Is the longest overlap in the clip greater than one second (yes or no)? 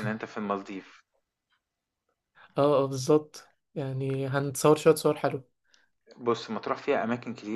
no